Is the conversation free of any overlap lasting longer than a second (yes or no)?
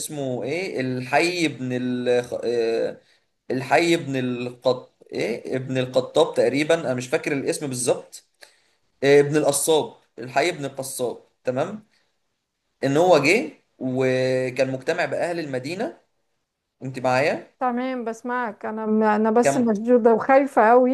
yes